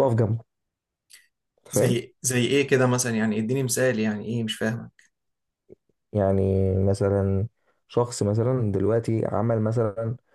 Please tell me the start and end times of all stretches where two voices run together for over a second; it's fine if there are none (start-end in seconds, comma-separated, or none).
none